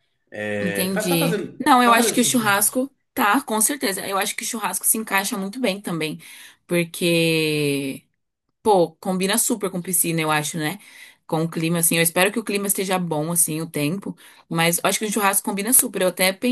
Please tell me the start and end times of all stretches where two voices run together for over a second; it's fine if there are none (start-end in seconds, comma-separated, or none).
0.6-2.6